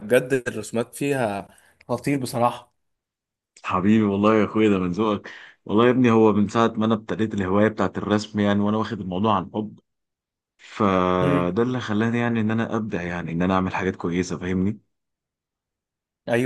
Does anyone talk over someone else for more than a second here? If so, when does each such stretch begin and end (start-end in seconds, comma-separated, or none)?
none